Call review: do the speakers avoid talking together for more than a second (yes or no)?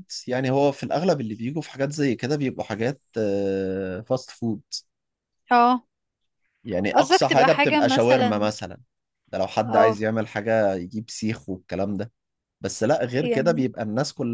no